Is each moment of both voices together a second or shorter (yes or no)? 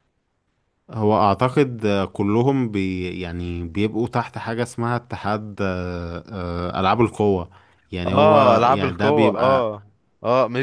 no